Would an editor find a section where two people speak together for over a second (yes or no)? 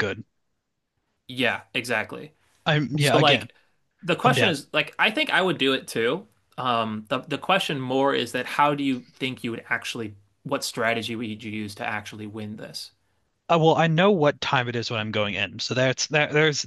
no